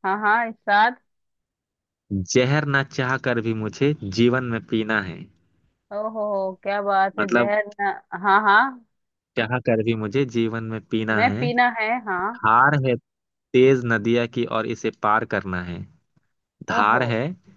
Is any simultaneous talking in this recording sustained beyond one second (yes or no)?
no